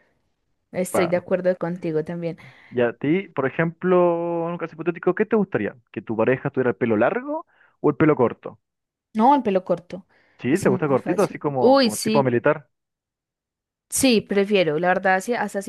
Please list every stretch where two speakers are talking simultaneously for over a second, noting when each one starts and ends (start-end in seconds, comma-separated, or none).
10.5-12.3